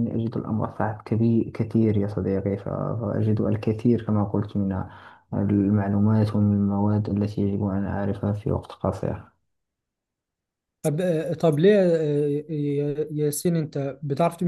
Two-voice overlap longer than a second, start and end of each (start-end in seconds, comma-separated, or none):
none